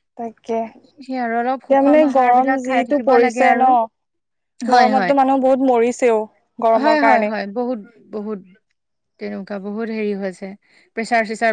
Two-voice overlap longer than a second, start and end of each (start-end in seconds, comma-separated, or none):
1.6-3.7